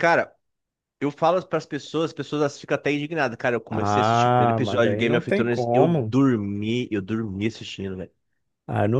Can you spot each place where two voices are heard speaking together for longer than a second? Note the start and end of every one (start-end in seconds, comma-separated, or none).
3.7-6.1